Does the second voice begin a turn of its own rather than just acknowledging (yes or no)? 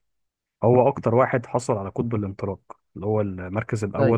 no